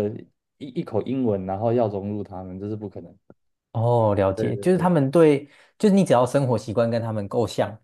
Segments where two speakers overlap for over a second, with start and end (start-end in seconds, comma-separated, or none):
none